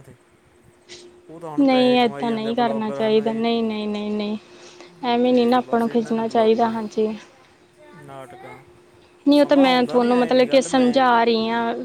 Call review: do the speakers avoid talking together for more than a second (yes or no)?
no